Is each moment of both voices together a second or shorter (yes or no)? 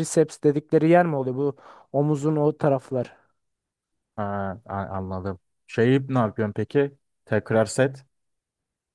yes